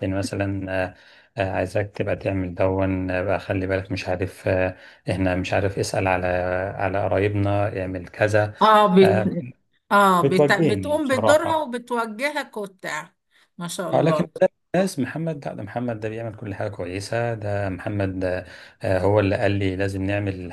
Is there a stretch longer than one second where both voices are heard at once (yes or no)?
yes